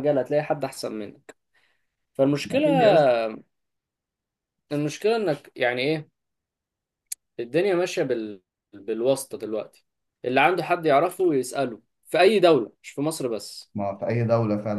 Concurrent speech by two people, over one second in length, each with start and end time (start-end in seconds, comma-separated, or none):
none